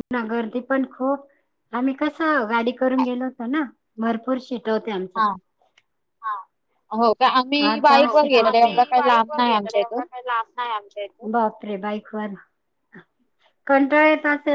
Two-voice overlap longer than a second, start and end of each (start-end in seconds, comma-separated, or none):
7.7-10.1